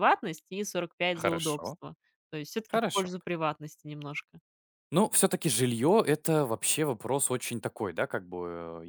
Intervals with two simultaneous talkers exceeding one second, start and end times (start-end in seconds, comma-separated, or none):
none